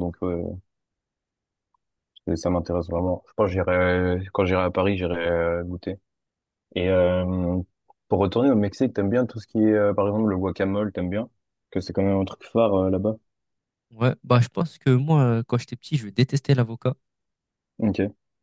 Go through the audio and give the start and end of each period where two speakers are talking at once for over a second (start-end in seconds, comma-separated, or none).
none